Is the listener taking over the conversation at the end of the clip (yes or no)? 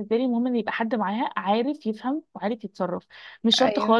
no